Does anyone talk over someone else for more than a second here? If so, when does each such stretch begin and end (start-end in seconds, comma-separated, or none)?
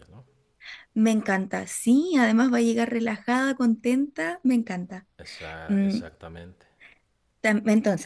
none